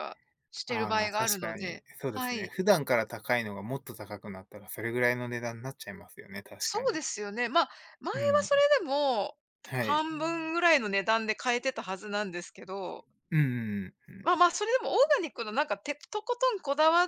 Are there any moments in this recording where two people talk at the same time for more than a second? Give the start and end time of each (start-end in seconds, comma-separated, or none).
0.7-2.5